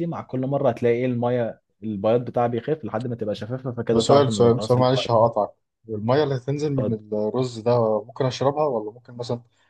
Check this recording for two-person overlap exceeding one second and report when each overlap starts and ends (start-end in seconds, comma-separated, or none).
3.9-5.1